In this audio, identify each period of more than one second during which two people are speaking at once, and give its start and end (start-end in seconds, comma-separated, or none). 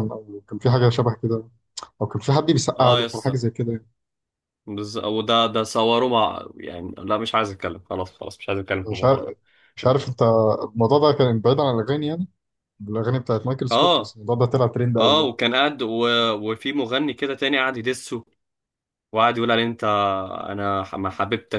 none